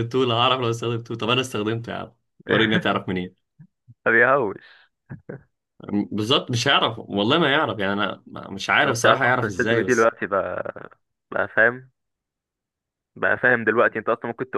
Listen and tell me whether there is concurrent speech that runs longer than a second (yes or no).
yes